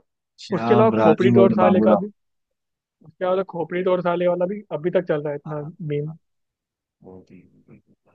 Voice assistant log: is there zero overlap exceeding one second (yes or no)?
no